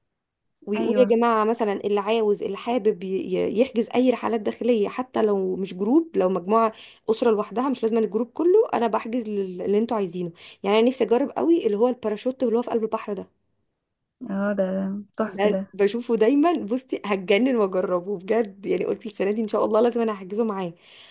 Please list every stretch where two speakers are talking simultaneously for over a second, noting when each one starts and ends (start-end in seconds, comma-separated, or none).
none